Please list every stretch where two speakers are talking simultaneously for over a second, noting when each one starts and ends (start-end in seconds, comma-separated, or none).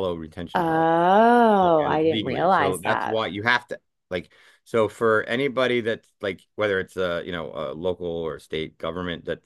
1.6-3.2